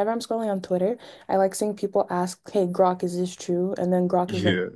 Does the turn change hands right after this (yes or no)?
no